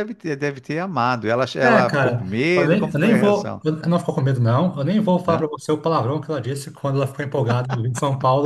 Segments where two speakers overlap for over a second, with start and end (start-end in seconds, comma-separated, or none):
1.6-3.6